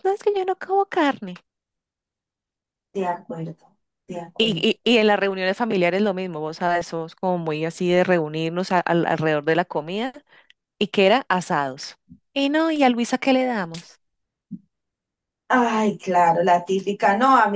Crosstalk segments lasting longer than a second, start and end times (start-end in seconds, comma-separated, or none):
none